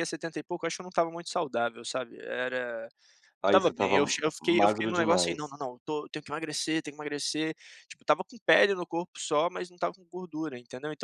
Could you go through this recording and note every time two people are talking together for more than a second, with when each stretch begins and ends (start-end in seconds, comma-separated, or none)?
3.4-5.5